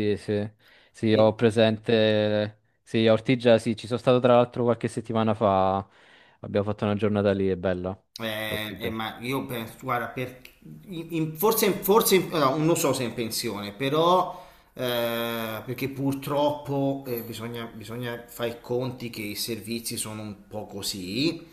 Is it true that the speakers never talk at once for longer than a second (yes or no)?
yes